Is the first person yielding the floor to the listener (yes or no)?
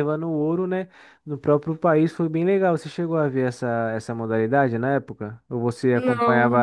no